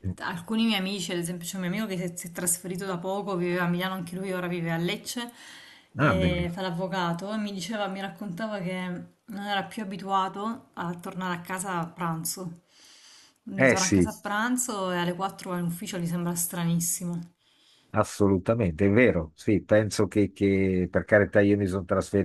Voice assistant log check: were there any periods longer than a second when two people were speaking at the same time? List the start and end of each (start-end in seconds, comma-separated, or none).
none